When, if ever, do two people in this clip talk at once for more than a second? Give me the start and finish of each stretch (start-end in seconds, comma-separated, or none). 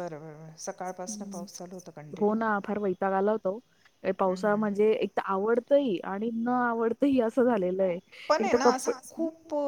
none